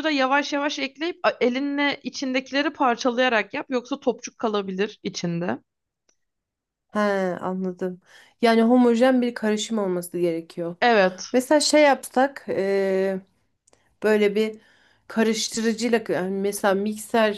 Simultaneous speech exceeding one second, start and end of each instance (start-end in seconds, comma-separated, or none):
none